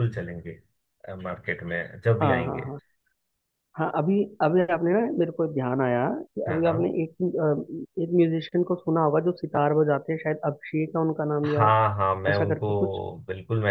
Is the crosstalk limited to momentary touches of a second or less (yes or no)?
yes